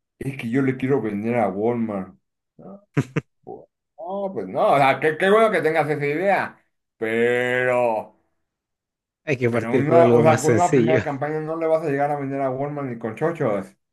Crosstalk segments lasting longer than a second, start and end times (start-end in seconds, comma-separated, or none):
9.5-11.0